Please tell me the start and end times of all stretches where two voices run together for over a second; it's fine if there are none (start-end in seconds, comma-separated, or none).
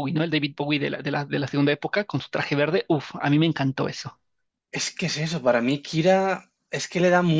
none